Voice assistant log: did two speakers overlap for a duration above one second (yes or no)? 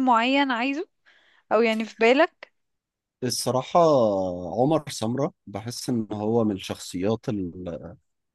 no